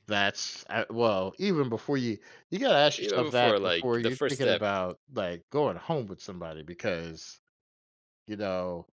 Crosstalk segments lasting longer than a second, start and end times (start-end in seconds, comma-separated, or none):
3.0-4.6